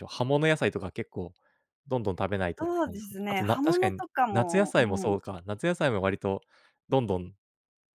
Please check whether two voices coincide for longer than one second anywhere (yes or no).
yes